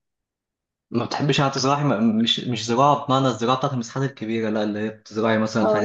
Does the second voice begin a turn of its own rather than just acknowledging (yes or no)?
no